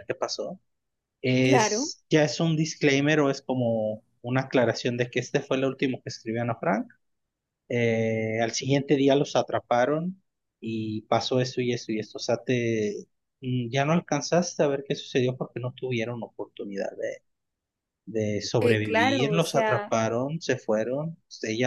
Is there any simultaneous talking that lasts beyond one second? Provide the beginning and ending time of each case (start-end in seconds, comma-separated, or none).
18.6-19.9